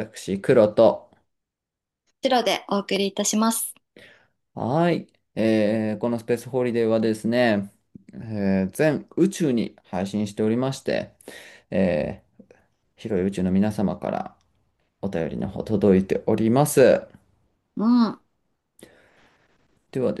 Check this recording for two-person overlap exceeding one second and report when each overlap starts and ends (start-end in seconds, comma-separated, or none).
none